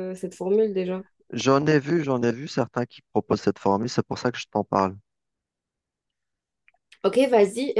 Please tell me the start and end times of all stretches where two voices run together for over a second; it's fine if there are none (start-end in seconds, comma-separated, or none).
none